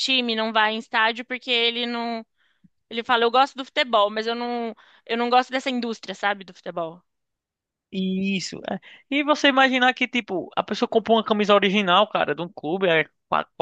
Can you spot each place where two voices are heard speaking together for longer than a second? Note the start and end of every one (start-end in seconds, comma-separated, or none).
none